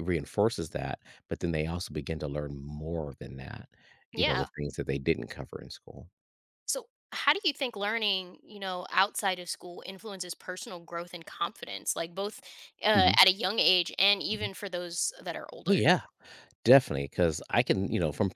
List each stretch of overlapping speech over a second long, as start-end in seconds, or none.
none